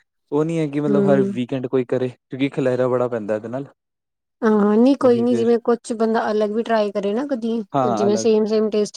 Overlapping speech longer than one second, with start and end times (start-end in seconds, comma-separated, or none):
none